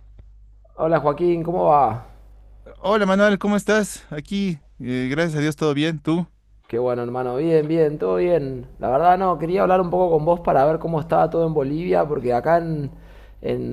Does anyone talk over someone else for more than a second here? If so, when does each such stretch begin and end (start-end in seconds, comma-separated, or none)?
none